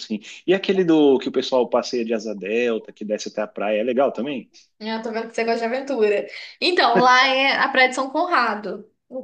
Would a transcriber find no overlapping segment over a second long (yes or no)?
yes